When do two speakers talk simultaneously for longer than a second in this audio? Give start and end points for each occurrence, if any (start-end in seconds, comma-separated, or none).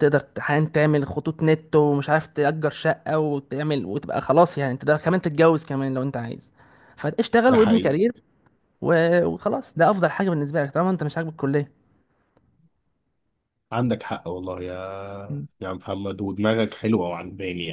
none